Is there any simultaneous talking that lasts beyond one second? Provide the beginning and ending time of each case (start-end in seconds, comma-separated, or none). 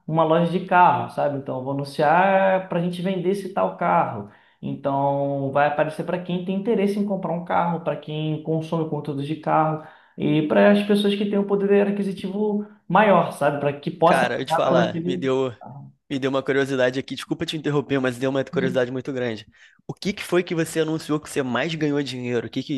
14.0-15.5